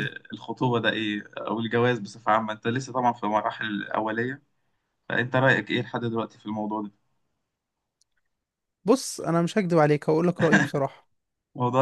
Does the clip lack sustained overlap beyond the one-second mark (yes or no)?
yes